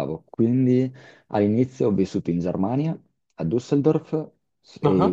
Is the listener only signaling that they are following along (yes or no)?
yes